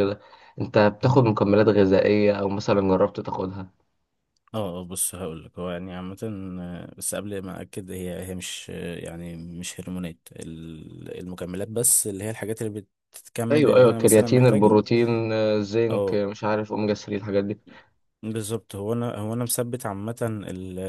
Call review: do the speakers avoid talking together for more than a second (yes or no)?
no